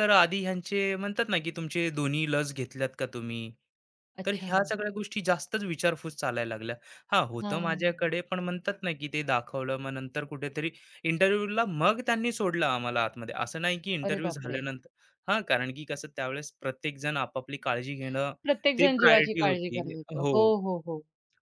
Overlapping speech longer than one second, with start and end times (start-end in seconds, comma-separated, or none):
18.8-20.5